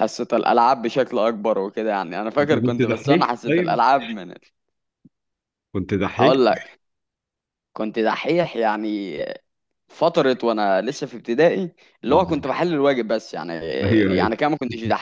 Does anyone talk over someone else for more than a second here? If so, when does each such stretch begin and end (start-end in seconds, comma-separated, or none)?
2.4-3.8